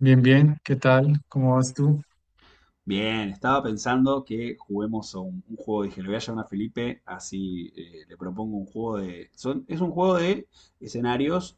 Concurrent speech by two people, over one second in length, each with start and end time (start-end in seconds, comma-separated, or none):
none